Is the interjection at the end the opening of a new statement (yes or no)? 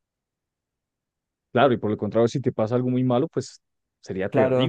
yes